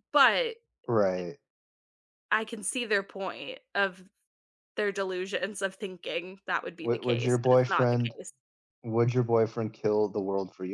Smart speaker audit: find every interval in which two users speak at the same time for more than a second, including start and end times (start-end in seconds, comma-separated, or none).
6.8-8.2